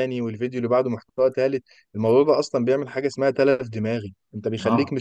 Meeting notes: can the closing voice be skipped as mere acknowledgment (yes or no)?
yes